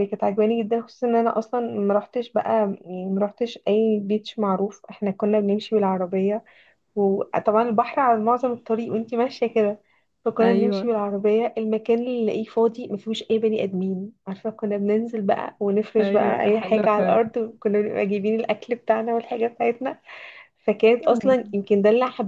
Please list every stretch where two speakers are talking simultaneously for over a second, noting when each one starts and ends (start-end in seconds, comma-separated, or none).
16.0-17.2